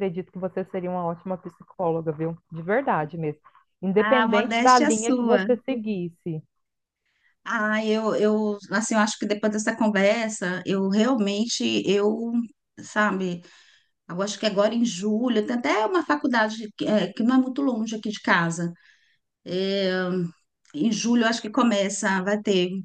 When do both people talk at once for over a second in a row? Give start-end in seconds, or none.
4.1-5.5